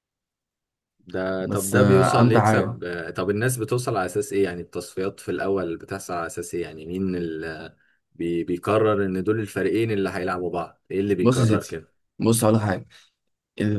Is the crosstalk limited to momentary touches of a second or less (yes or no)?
no